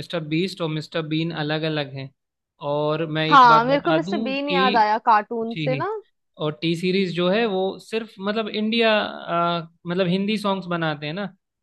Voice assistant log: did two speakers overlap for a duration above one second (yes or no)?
yes